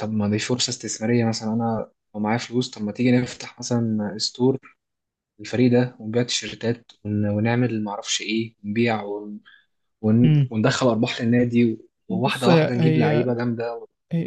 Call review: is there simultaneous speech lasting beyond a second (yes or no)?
yes